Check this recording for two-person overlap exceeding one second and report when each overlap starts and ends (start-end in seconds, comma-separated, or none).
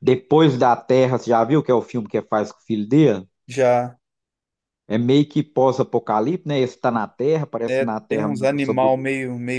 7.7-9.0